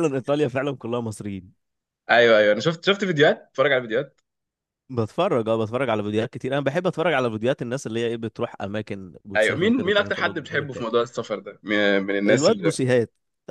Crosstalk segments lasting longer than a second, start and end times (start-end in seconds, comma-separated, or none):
9.3-10.9